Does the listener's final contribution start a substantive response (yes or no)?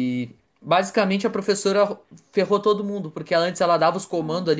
no